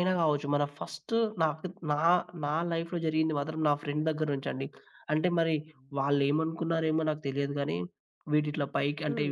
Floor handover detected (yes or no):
no